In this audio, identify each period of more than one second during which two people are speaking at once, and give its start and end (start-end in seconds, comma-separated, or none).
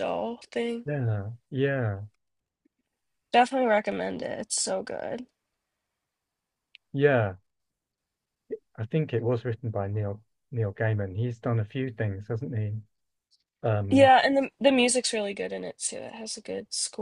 none